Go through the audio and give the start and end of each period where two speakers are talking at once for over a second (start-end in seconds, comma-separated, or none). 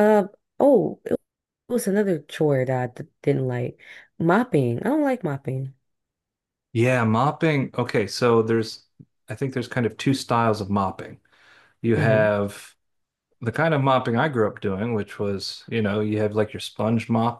none